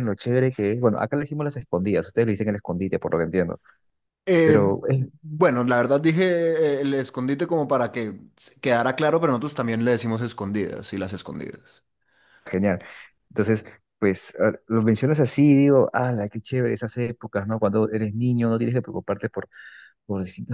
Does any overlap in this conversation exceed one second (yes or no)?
no